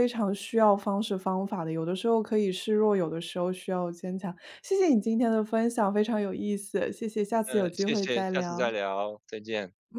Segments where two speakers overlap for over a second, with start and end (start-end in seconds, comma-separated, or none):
7.4-8.7